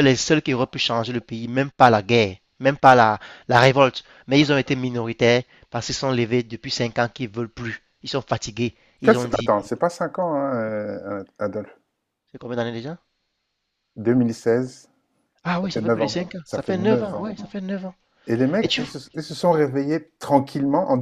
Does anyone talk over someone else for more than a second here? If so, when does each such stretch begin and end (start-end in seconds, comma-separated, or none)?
15.6-17.3